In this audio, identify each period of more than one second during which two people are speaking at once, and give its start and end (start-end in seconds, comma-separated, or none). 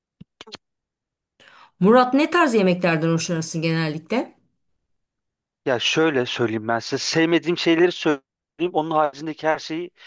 none